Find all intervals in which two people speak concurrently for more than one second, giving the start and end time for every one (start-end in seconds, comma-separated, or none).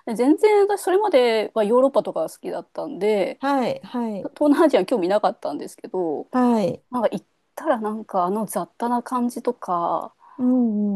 none